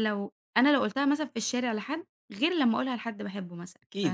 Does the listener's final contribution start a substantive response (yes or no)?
yes